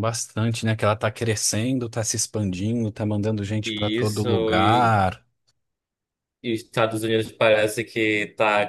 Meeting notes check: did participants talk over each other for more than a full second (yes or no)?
yes